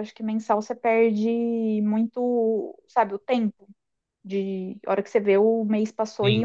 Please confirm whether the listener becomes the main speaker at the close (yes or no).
no